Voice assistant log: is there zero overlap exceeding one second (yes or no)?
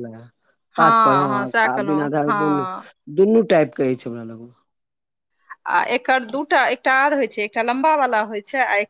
no